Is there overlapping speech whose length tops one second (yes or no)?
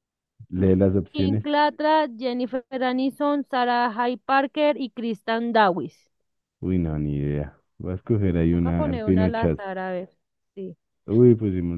yes